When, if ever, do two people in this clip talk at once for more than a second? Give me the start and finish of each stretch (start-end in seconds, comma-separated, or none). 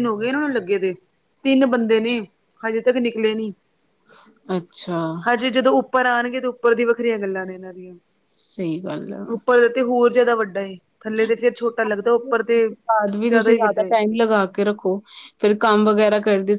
none